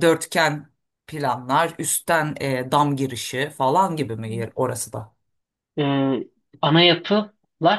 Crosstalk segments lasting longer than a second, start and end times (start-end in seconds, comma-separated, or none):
none